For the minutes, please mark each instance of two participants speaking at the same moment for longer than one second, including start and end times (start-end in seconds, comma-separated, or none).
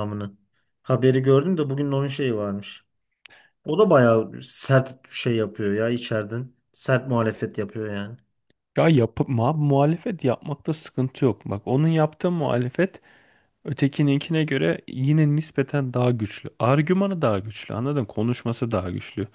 none